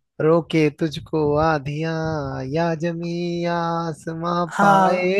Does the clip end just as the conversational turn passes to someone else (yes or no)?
no